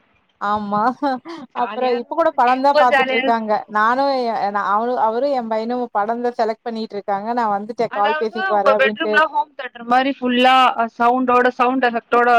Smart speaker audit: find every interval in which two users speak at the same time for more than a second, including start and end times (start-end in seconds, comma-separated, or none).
1.6-3.4